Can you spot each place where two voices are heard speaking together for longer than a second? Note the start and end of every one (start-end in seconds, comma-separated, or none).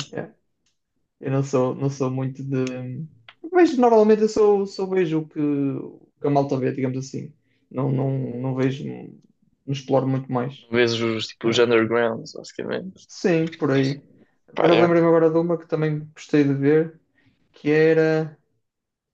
none